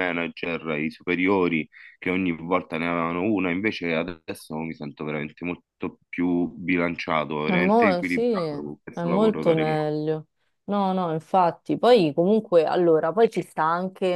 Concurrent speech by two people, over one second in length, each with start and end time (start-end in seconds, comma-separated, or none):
7.4-9.9